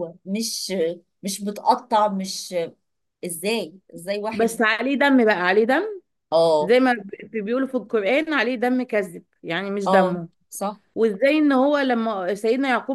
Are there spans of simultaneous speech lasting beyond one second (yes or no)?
no